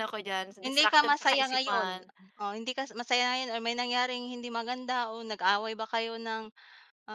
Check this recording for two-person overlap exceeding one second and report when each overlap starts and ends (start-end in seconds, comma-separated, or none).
0.6-2.0